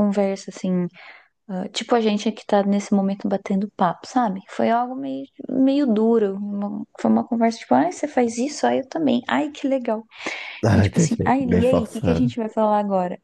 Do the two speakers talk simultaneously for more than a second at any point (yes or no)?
yes